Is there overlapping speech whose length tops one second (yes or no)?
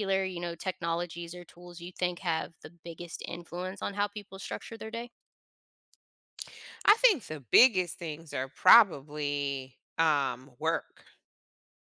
no